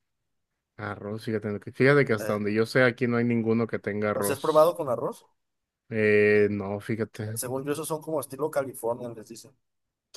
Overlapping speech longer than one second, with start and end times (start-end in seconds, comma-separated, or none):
none